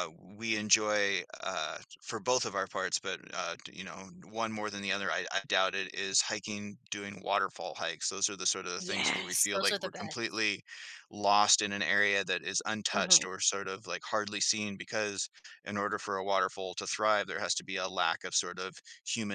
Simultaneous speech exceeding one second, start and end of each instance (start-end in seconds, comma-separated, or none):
8.8-10.4